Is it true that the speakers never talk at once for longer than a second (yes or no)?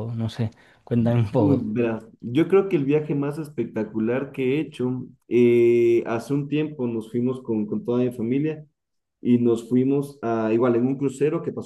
yes